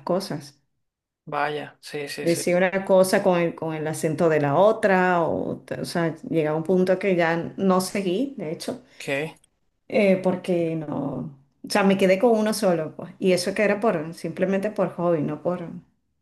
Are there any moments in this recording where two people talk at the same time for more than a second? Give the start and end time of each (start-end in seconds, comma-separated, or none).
none